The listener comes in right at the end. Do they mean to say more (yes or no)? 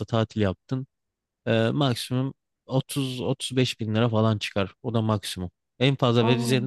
no